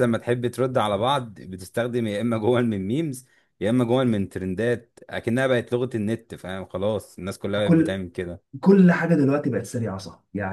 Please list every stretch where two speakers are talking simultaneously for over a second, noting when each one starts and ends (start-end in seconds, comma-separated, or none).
none